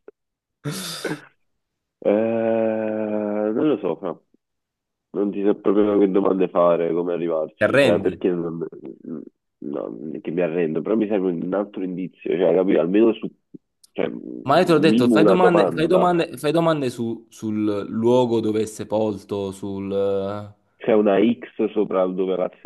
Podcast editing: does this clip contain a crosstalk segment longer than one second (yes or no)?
yes